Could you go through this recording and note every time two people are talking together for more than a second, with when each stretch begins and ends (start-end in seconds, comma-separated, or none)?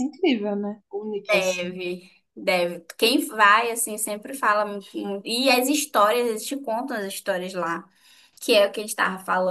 none